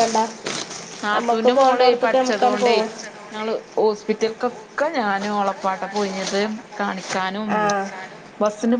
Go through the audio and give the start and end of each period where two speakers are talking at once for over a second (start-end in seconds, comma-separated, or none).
1.2-2.8